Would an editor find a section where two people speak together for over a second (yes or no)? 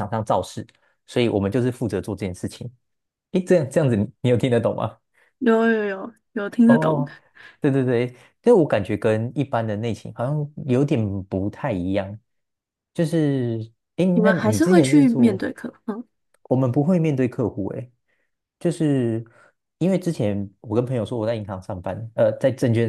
yes